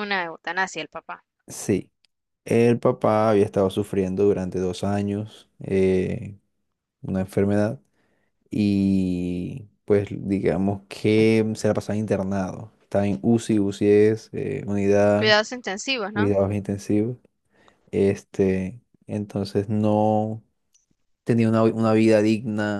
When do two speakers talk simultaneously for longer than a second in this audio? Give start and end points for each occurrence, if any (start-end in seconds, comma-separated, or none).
none